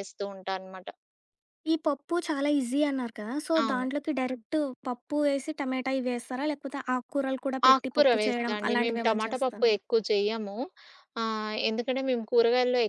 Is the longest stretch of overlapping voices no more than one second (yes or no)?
no